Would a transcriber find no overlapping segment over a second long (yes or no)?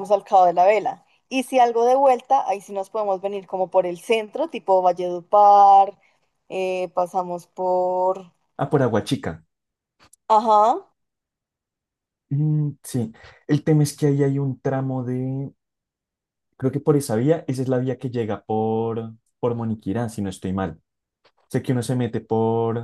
yes